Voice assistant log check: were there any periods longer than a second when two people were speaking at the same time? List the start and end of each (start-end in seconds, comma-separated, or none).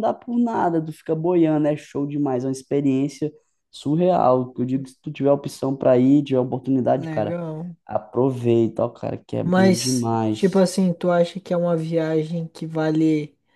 9.4-10.7